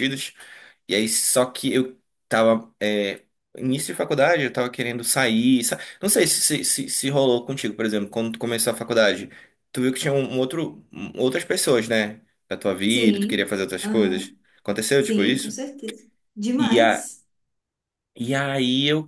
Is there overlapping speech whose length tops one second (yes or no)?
yes